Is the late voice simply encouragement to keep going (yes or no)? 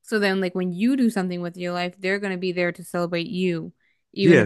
no